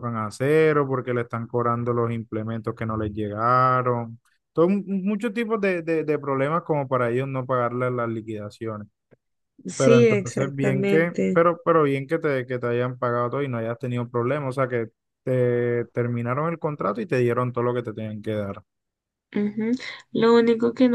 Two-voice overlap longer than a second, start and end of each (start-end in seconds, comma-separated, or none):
9.8-11.4